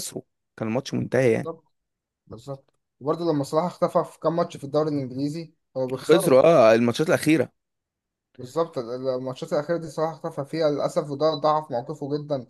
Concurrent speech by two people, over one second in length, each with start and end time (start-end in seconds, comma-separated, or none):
none